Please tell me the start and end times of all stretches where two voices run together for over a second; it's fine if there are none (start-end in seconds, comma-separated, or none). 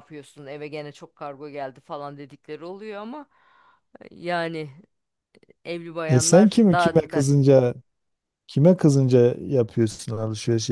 6.1-7.5